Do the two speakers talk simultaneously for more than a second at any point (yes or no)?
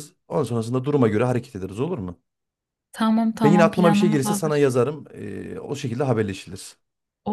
yes